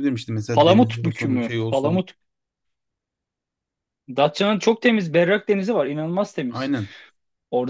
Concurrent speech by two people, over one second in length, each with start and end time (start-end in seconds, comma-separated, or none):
0.5-2.0